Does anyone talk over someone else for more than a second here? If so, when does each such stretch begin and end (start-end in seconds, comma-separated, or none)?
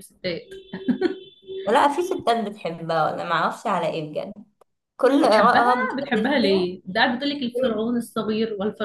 5.2-6.7